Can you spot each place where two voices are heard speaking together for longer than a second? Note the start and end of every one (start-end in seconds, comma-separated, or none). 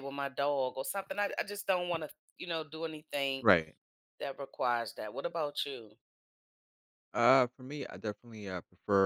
none